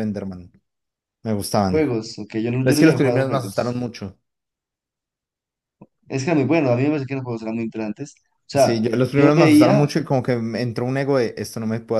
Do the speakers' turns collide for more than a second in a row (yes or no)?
yes